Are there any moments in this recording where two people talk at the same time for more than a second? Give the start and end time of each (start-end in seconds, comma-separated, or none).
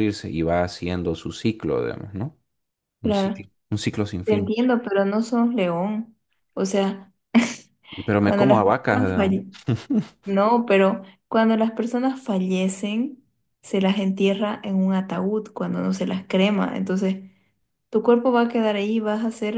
8.2-9.5